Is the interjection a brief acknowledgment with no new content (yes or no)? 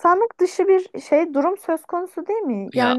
yes